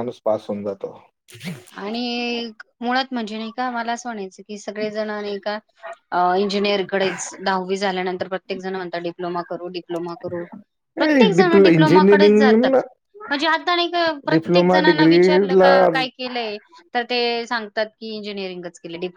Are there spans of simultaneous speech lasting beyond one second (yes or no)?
yes